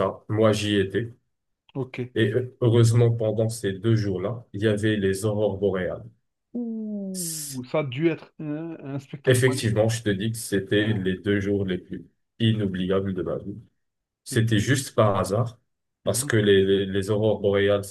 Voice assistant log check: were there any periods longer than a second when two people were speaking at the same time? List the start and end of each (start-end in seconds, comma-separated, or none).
none